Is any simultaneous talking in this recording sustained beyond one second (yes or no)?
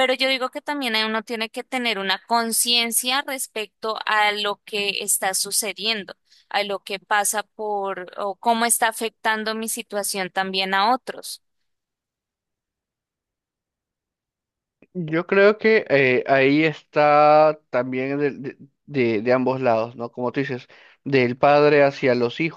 no